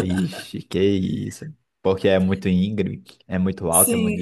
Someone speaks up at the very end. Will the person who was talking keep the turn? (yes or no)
no